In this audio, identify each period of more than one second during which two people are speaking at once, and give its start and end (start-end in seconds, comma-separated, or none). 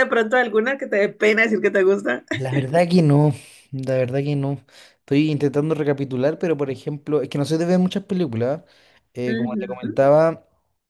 none